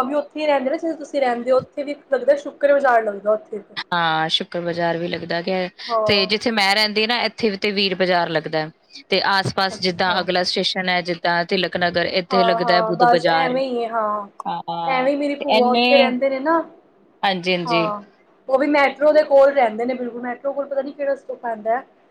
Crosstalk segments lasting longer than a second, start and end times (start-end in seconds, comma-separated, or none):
12.3-13.6